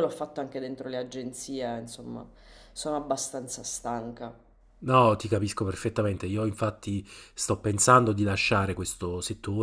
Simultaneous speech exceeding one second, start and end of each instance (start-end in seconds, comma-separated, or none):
none